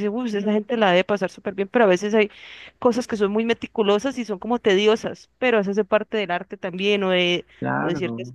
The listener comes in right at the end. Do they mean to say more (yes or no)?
no